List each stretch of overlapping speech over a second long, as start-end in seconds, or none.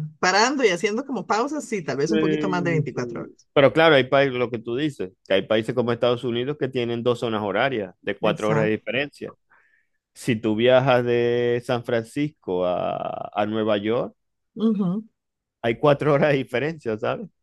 2.1-3.5